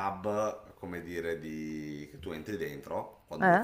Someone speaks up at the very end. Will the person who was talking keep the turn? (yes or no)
yes